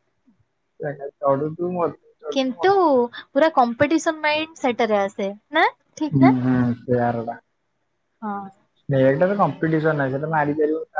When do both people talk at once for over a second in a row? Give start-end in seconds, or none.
none